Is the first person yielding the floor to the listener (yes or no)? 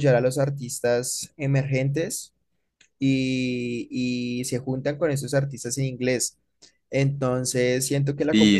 no